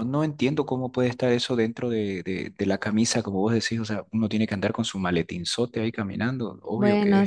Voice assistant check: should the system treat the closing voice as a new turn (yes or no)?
yes